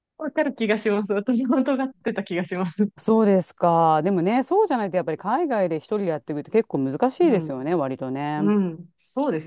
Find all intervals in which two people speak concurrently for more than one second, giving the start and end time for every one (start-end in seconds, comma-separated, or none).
none